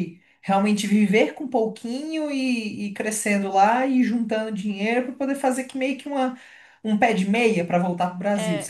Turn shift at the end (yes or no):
yes